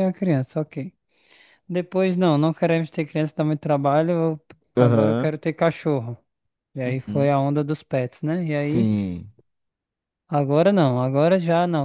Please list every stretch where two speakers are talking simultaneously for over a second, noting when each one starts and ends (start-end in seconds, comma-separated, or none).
none